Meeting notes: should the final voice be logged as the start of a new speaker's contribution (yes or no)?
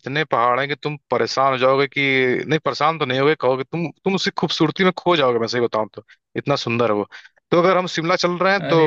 no